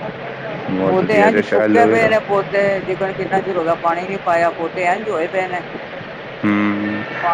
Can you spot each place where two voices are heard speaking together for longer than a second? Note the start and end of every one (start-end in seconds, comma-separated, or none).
0.9-2.1